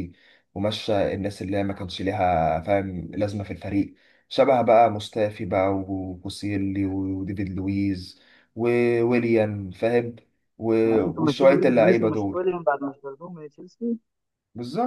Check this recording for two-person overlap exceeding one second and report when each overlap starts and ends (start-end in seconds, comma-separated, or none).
10.8-12.5